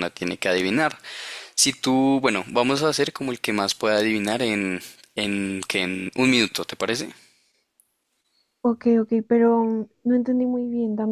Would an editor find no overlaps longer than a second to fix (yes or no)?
yes